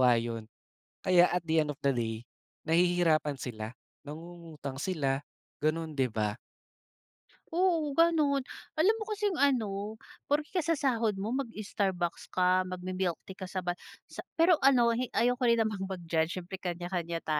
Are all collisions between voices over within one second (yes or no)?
yes